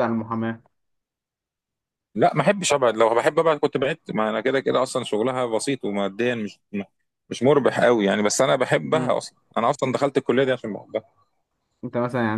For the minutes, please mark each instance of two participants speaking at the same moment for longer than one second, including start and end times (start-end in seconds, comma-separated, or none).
none